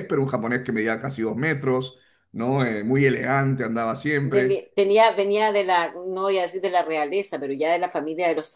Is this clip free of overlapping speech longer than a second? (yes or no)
yes